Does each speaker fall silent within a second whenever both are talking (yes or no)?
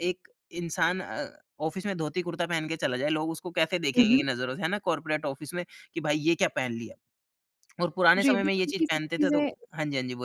no